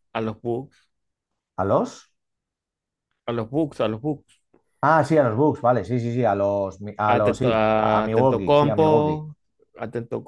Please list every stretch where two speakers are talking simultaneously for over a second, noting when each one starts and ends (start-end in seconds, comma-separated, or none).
7.1-9.2